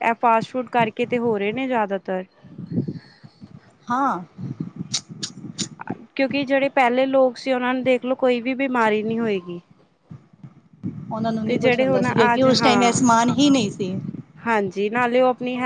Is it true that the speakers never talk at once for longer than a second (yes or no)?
no